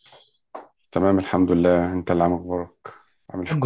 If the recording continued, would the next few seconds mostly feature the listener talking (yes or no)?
yes